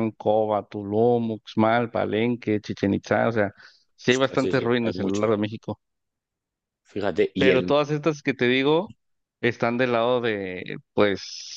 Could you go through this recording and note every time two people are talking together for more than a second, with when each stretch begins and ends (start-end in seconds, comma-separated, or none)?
4.0-5.4